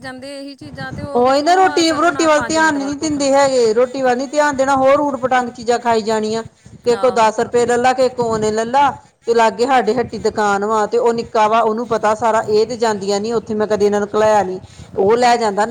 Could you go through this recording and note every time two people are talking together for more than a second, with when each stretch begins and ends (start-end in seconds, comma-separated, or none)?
1.1-3.5